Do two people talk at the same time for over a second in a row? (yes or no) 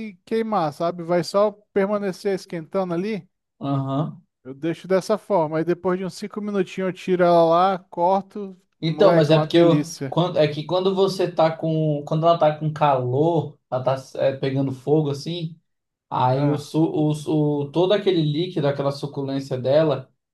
yes